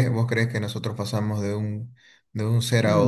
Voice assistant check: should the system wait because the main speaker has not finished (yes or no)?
no